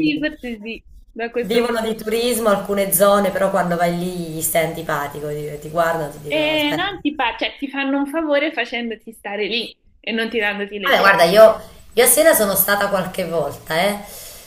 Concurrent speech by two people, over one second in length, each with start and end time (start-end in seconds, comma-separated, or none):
none